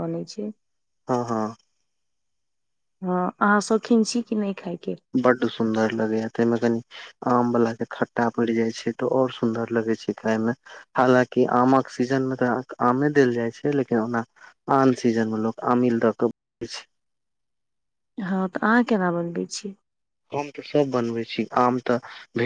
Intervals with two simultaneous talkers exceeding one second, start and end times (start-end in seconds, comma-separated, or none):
none